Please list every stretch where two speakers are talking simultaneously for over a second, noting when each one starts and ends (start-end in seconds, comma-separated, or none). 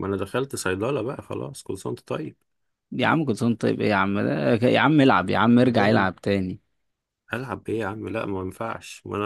none